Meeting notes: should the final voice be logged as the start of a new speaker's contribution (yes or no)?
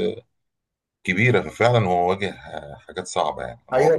yes